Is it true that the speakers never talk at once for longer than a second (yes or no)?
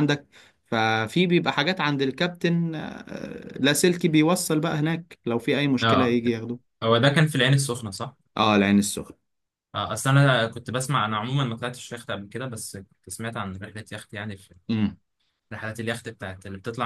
yes